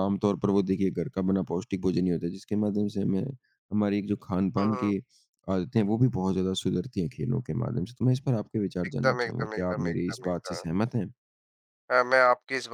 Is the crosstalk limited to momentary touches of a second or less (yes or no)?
no